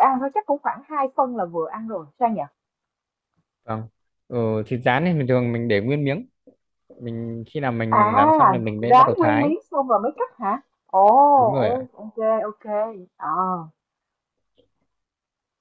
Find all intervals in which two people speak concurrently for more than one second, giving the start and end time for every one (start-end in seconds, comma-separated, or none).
8.0-9.5